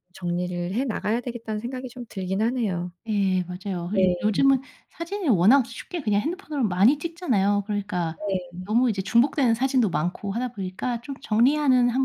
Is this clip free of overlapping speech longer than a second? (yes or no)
yes